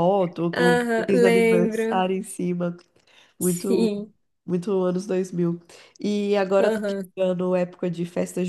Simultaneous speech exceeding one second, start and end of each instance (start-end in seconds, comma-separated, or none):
0.5-2.0